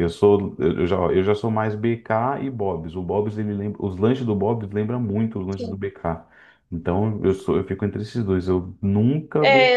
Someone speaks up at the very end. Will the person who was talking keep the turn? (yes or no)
no